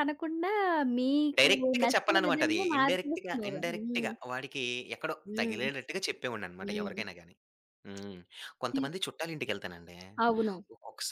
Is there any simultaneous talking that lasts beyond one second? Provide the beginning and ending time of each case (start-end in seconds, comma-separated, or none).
1.4-4.1